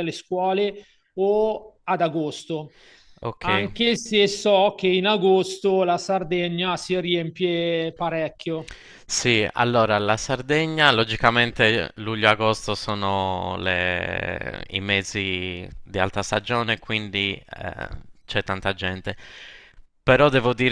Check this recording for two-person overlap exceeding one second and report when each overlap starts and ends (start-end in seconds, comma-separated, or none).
none